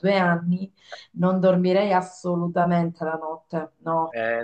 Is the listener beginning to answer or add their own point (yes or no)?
yes